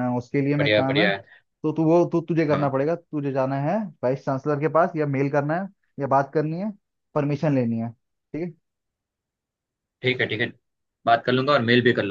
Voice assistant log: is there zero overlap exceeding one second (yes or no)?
yes